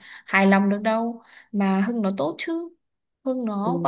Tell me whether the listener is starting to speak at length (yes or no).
yes